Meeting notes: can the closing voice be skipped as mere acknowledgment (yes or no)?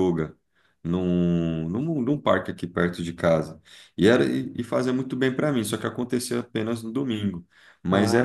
yes